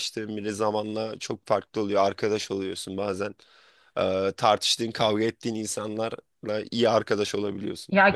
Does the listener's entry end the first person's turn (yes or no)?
yes